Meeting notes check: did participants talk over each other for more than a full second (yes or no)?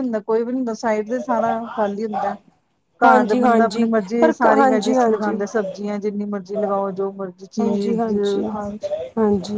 yes